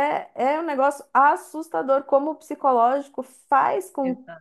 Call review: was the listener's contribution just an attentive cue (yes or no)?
yes